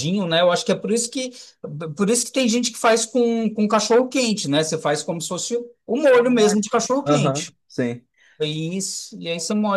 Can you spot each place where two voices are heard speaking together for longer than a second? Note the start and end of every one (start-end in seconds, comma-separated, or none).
6.1-7.6